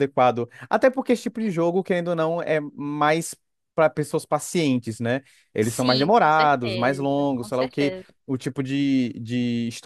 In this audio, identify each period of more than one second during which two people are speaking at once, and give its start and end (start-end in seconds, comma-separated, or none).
5.6-8.1